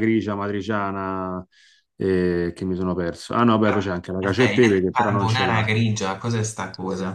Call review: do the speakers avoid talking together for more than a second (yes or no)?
no